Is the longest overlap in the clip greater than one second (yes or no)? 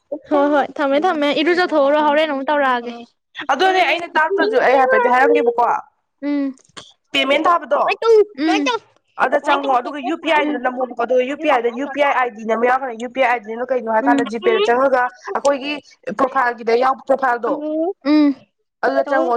yes